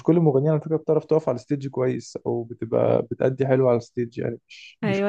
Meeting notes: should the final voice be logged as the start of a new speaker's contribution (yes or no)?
yes